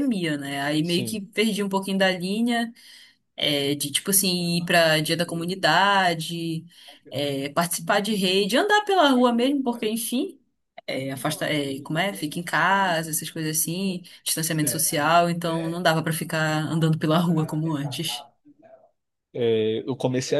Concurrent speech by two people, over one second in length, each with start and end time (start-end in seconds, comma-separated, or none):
none